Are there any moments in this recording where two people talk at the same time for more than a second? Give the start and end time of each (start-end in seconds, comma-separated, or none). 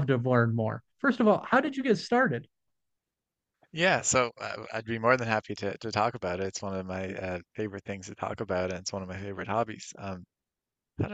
none